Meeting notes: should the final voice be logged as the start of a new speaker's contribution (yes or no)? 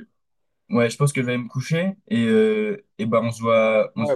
yes